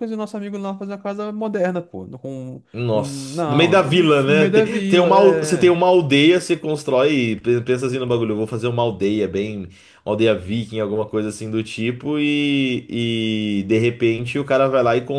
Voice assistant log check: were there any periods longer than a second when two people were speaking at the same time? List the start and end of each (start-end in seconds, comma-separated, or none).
2.7-5.8